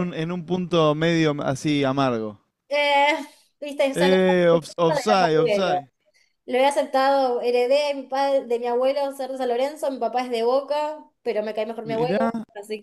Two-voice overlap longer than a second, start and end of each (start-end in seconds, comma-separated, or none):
3.9-5.8